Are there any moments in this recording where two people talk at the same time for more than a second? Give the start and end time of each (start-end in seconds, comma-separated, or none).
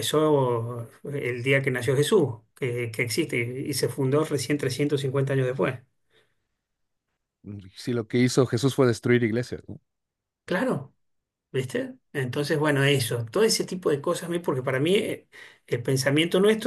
none